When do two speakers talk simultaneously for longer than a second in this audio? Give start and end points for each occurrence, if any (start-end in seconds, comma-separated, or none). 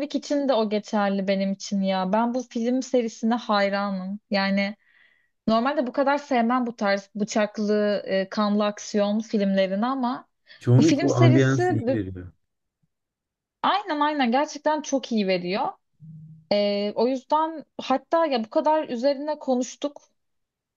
10.8-12.0